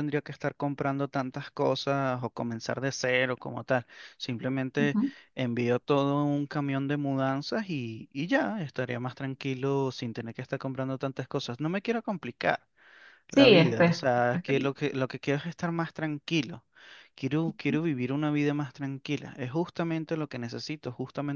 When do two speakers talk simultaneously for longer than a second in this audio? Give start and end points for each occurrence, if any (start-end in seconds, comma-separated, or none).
13.3-14.7